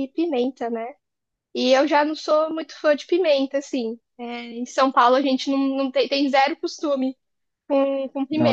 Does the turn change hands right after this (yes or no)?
yes